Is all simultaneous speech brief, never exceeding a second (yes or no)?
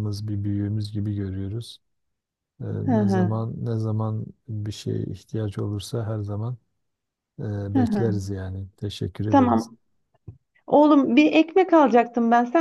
yes